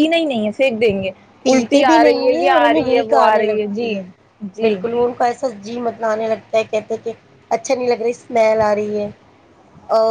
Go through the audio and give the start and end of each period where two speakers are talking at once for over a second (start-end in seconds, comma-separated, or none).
1.4-3.9